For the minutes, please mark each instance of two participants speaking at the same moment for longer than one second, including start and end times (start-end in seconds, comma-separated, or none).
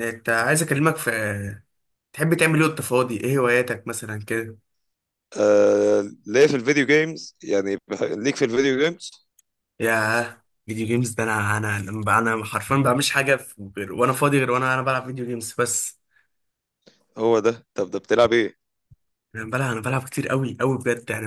none